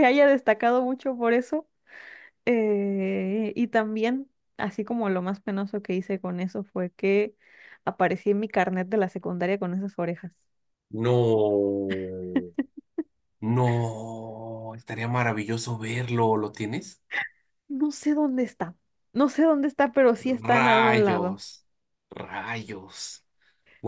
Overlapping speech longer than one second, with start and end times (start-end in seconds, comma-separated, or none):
20.2-21.4